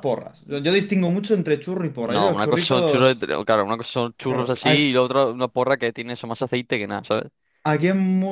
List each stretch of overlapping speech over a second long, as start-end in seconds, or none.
2.0-3.3